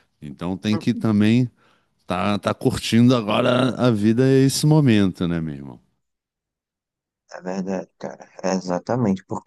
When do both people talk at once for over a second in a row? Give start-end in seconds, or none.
none